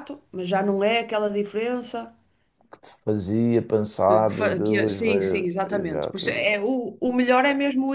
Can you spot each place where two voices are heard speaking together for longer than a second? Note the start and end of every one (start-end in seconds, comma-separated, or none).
4.1-6.6